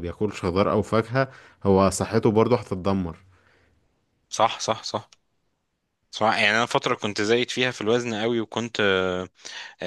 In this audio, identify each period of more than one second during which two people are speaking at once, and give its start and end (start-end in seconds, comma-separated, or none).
none